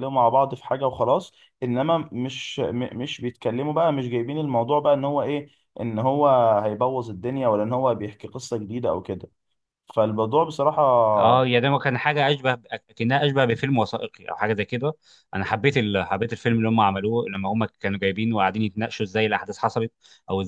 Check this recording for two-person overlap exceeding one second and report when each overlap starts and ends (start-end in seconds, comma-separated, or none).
none